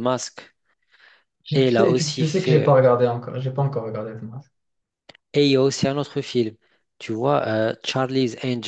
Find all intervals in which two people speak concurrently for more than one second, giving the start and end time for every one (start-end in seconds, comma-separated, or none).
1.5-2.7